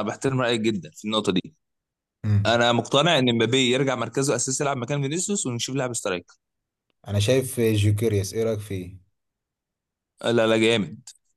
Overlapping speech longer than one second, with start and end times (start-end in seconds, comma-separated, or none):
none